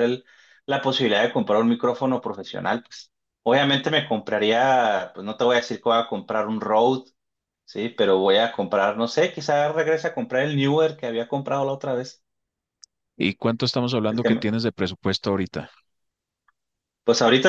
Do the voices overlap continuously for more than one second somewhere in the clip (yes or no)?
no